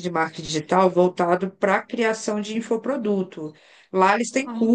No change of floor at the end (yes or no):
yes